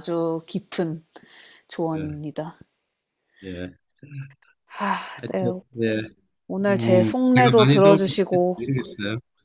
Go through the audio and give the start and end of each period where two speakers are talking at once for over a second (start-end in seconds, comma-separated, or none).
6.7-8.6